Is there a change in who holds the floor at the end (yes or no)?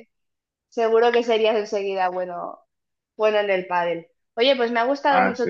no